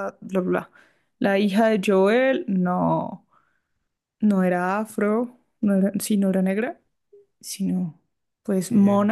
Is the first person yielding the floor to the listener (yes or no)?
no